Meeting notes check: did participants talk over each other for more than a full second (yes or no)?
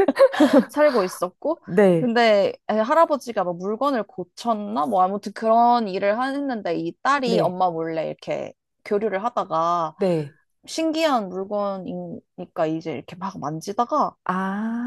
no